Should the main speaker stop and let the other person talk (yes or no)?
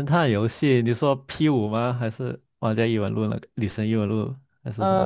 yes